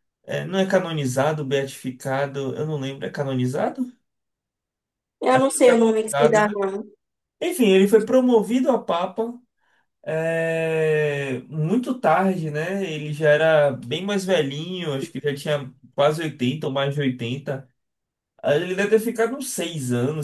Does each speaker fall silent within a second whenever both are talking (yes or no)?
no